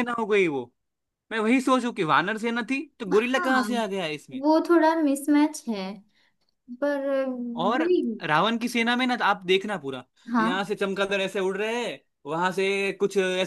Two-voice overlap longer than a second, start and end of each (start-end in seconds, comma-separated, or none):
none